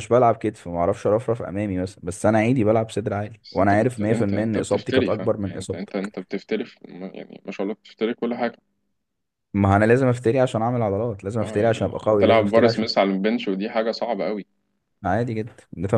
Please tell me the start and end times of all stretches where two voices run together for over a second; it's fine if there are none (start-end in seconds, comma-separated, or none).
3.4-6.1, 11.4-12.9